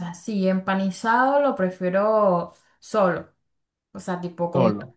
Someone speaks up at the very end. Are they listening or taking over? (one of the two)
listening